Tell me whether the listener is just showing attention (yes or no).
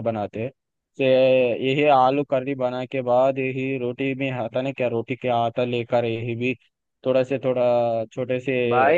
no